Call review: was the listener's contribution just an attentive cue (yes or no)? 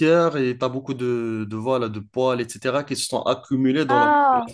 yes